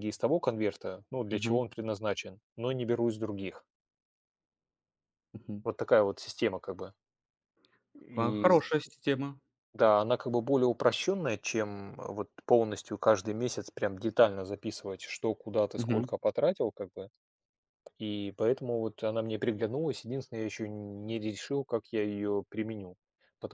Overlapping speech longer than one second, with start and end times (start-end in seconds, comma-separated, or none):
none